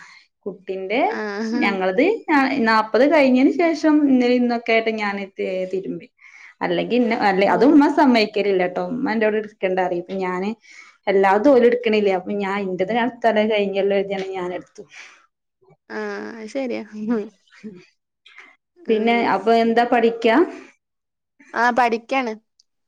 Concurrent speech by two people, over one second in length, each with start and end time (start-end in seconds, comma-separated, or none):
none